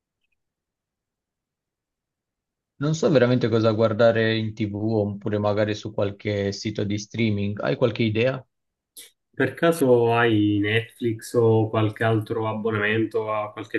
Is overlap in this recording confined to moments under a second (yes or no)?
yes